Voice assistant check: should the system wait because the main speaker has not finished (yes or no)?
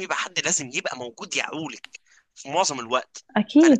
yes